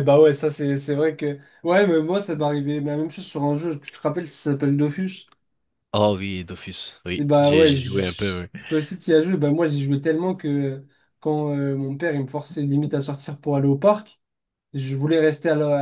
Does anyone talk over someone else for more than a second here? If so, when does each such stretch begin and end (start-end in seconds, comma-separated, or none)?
7.2-8.5